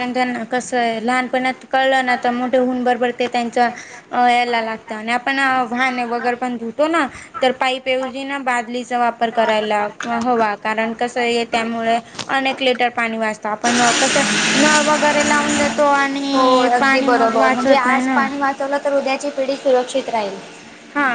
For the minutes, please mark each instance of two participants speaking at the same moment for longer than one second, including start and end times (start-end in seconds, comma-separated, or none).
16.3-18.2